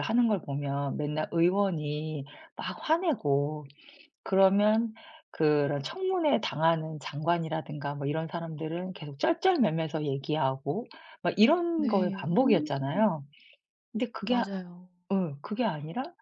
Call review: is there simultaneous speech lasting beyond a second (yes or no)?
yes